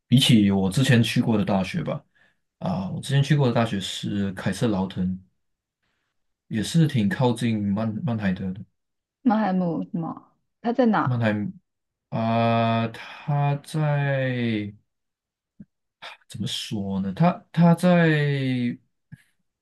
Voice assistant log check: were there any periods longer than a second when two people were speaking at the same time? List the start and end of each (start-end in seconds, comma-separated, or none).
none